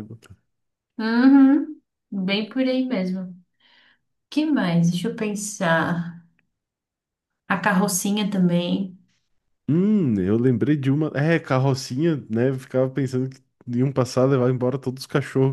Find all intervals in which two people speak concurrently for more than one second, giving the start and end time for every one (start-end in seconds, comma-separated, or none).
none